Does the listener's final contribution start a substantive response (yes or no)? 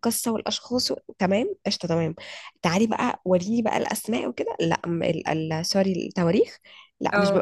no